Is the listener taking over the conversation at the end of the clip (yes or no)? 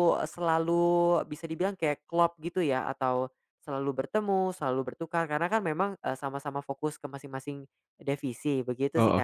yes